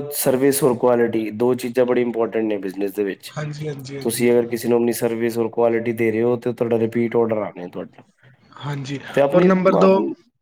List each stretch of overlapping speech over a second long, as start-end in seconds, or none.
none